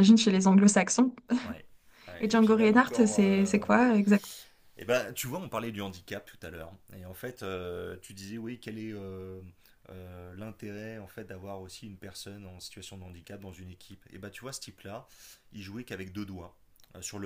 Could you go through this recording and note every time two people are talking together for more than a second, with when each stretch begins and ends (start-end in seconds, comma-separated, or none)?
2.2-3.7